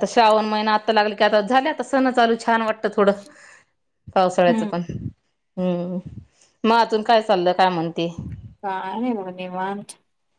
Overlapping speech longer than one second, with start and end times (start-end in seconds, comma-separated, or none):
none